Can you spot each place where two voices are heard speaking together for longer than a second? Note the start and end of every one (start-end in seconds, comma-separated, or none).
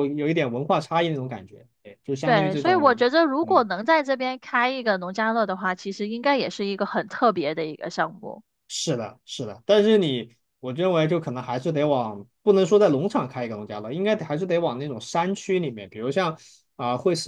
2.2-3.6